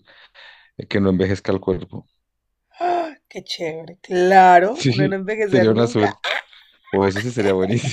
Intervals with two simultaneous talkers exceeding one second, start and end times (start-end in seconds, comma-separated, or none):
4.6-6.2